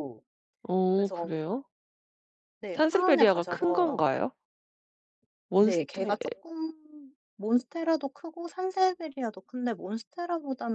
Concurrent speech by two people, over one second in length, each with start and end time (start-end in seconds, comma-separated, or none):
2.7-4.1